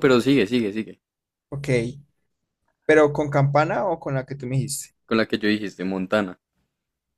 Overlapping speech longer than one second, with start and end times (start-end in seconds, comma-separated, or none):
none